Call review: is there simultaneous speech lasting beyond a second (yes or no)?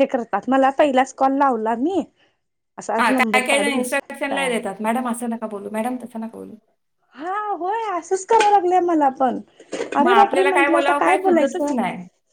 yes